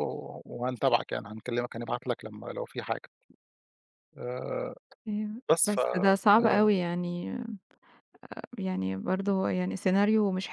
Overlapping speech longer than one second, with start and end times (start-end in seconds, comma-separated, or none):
none